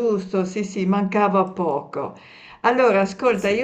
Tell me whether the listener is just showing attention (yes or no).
yes